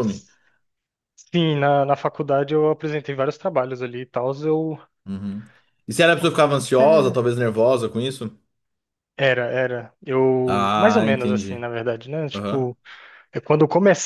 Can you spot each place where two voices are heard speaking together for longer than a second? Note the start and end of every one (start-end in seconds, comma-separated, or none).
10.4-11.6